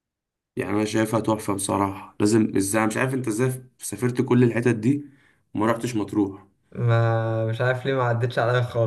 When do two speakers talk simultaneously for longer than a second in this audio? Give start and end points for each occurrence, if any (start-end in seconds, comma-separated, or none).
none